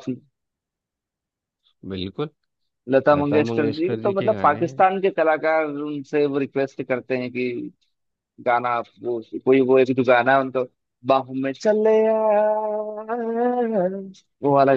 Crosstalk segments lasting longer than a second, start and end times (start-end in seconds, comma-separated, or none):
3.2-4.8